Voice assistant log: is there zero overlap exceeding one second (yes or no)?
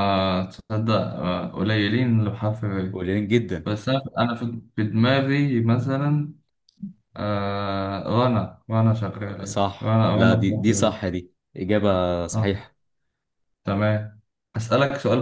no